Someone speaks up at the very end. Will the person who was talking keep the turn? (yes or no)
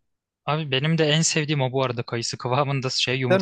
yes